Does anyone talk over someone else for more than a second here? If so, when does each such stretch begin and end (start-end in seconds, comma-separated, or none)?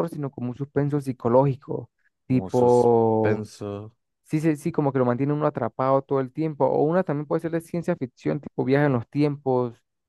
2.3-3.5